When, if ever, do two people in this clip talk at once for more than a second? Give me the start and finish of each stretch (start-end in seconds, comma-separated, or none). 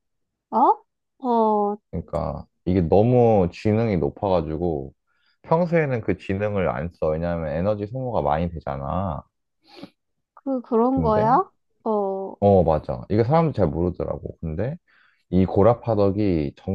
none